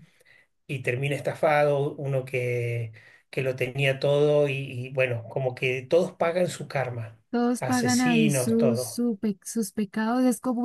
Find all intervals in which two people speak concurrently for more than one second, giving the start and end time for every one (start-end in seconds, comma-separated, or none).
7.6-9.0